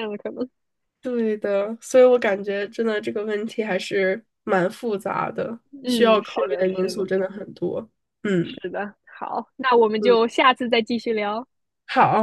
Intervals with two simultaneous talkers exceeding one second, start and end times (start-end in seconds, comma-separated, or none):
5.8-7.1